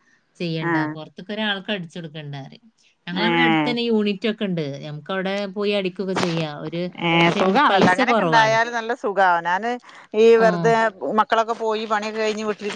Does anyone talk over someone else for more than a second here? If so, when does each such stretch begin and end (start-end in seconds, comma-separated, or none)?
none